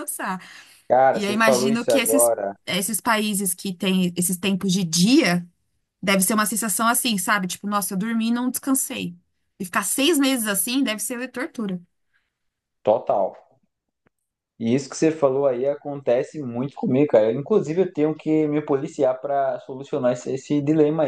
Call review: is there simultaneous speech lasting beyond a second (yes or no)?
yes